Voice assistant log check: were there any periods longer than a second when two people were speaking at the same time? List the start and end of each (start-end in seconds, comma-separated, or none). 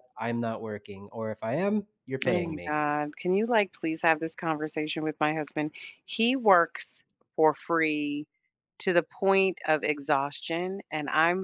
none